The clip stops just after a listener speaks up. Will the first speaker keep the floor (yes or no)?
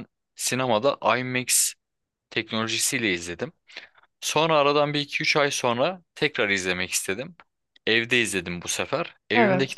yes